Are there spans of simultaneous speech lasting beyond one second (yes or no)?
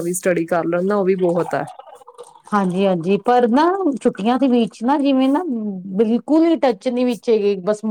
no